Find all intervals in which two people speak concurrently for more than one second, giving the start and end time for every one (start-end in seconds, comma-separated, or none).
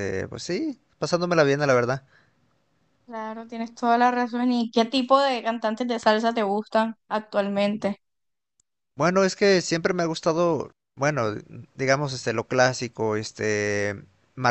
none